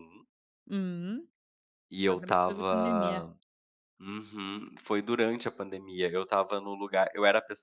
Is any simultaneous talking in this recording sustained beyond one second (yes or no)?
yes